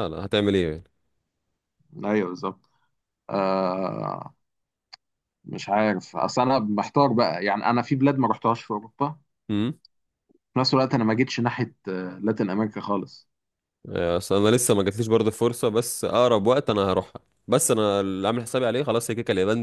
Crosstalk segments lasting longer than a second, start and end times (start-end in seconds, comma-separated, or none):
none